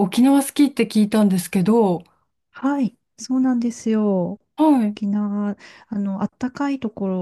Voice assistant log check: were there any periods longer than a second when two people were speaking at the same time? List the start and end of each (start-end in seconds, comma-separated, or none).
none